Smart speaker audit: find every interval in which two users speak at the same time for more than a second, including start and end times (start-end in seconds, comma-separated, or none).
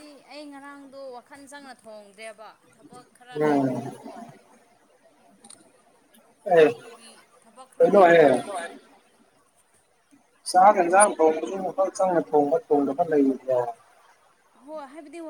none